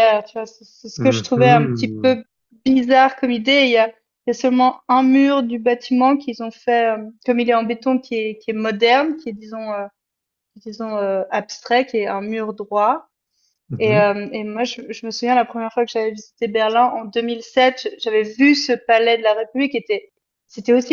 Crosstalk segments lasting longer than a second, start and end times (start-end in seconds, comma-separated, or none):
1.0-2.2